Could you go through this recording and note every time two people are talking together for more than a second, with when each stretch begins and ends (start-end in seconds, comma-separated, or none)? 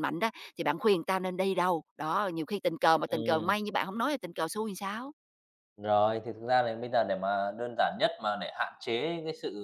none